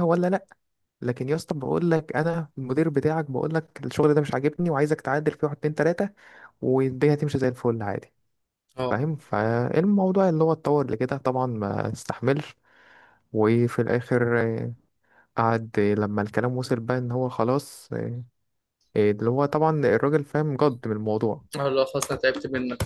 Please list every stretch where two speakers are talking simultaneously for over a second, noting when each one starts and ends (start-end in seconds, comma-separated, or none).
none